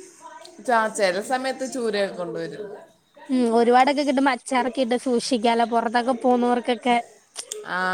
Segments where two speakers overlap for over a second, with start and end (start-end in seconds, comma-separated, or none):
none